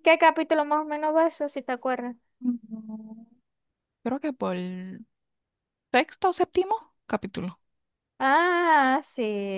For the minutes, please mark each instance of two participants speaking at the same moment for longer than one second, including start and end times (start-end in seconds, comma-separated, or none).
none